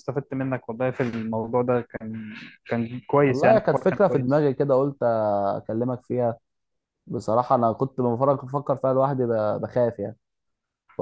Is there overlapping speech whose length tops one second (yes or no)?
yes